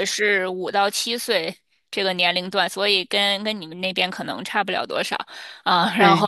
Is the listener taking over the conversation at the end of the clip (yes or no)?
no